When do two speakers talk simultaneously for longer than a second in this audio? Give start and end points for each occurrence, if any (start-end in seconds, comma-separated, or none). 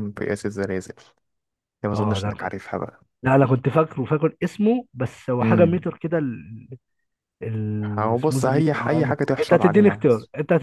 8.0-10.1